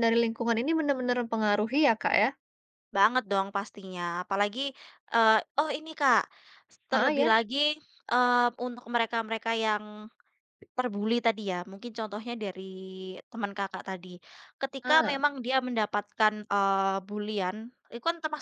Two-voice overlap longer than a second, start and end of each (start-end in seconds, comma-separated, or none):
none